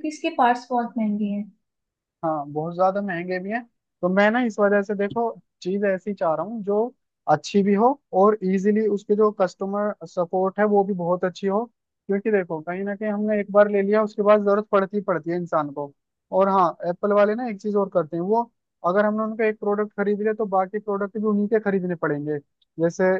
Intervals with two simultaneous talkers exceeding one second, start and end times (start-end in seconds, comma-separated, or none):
none